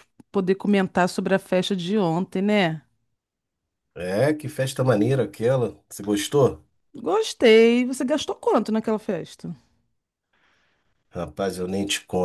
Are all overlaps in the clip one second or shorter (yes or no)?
yes